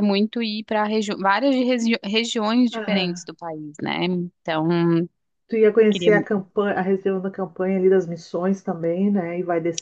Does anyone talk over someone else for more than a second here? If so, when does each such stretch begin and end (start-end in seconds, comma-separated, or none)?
none